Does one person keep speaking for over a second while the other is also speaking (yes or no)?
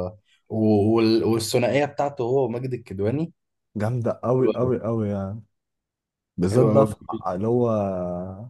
no